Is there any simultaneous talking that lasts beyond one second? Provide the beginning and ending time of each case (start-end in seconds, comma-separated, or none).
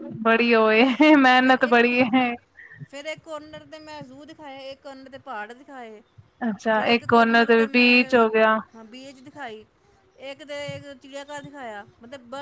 6.7-8.3